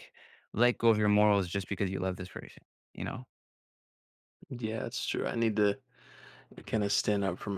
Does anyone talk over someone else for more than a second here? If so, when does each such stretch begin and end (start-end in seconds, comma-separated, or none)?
none